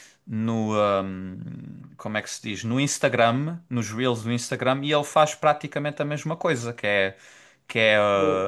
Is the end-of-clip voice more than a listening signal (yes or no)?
no